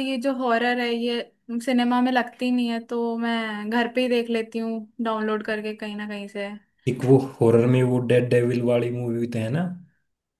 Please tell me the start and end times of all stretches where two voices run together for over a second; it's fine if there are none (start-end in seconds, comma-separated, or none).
none